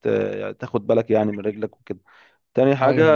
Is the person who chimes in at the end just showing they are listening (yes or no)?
yes